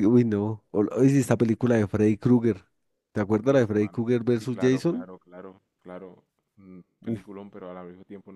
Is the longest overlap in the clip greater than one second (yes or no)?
yes